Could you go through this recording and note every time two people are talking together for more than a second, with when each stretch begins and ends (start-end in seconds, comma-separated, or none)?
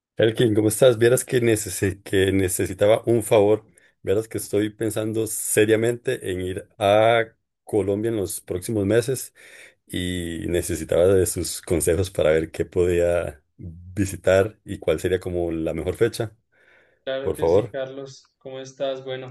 none